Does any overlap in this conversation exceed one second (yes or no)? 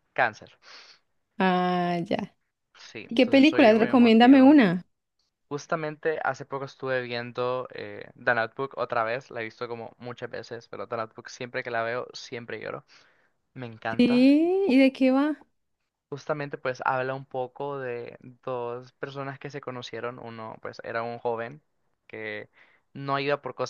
yes